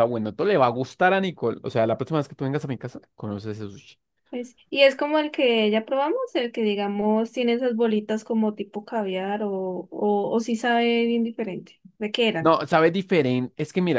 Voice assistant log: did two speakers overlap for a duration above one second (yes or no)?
no